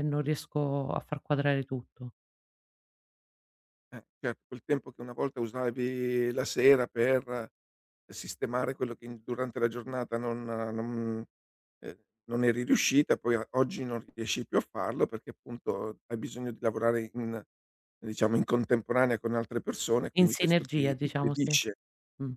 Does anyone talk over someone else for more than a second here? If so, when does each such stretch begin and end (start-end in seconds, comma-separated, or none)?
20.1-21.5